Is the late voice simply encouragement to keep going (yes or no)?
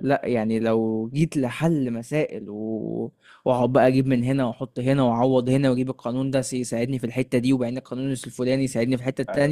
yes